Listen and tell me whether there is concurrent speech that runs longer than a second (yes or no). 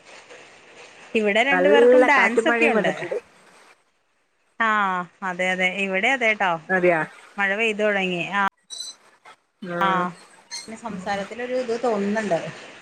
yes